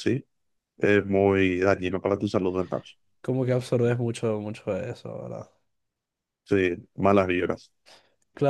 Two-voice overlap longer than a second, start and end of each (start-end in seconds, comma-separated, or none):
none